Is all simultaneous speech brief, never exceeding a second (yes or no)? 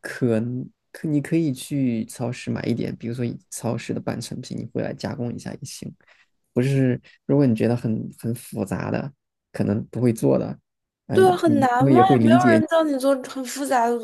no